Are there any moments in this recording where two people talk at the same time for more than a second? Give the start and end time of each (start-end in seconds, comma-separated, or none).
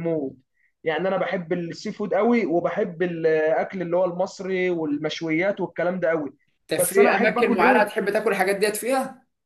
6.8-8.0